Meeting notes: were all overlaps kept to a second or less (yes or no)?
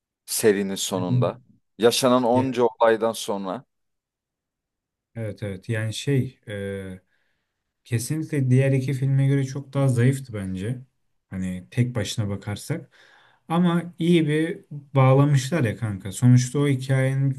yes